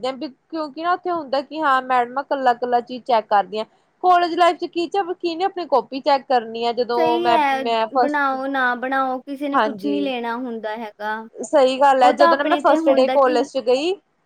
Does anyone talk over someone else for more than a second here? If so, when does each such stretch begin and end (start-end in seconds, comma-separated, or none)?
12.0-13.4